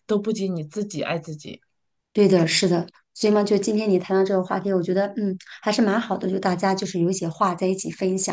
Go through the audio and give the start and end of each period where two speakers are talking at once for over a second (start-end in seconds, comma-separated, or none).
none